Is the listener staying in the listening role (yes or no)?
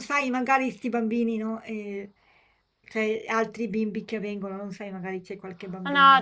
no